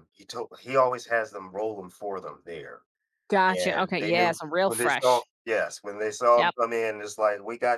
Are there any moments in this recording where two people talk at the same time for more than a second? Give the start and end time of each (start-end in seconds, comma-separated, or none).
3.6-5.2